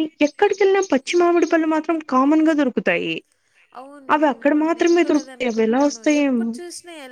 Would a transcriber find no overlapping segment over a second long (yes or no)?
no